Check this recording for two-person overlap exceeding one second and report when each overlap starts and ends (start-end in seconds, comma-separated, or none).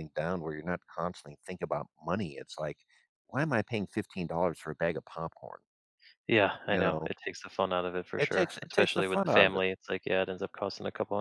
8.2-9.6